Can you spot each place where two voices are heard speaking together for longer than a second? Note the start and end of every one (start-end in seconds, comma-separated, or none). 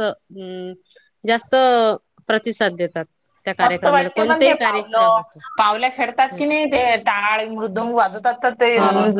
3.6-5.2